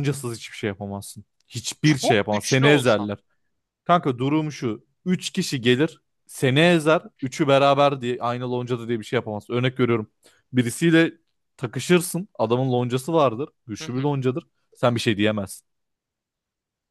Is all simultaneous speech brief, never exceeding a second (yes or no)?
no